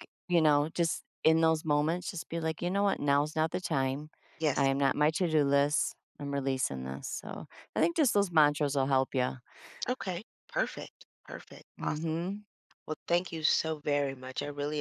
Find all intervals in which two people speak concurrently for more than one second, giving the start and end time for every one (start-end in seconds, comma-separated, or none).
none